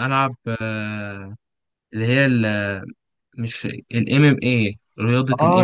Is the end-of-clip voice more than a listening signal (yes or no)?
yes